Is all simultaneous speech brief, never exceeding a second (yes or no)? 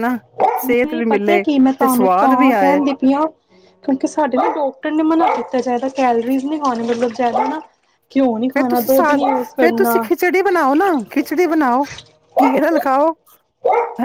no